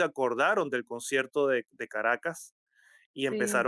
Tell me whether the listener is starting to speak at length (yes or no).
no